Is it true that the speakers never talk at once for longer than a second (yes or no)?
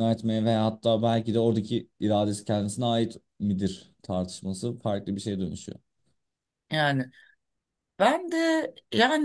yes